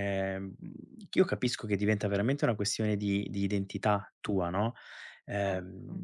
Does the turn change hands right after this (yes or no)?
no